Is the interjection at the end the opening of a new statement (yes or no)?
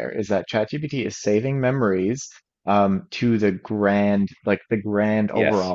no